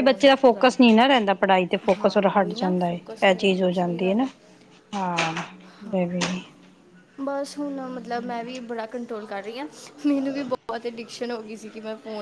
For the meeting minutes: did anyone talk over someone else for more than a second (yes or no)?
yes